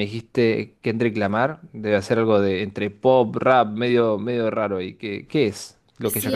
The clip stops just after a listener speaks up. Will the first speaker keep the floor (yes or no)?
no